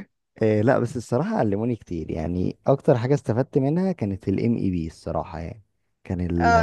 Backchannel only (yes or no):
no